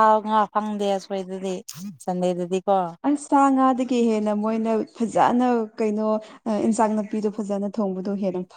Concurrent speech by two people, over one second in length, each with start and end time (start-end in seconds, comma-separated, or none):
none